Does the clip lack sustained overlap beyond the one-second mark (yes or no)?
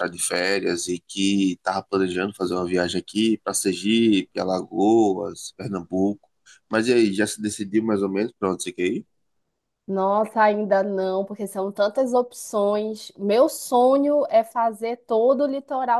yes